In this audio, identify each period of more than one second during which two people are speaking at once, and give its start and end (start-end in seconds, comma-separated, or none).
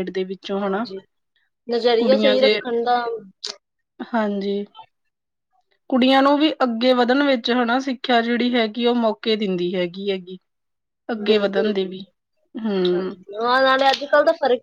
none